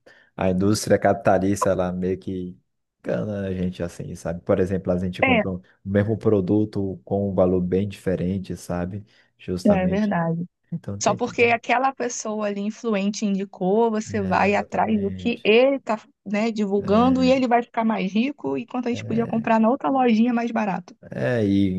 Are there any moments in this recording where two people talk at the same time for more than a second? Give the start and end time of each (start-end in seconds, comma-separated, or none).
14.1-15.6